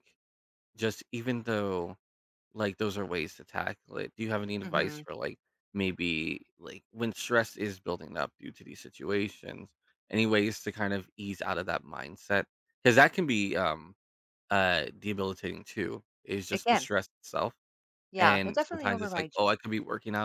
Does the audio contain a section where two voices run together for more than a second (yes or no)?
yes